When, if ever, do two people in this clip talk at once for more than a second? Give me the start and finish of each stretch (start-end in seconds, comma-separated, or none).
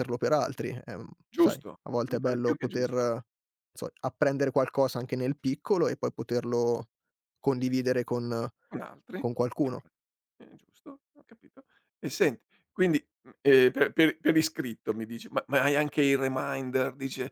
1.3-3.1